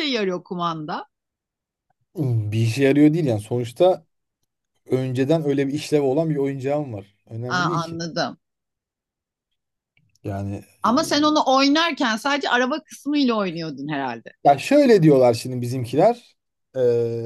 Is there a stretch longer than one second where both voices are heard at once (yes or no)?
no